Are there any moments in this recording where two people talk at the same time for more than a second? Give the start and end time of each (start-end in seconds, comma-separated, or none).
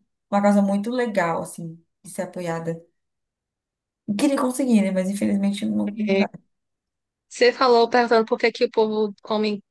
none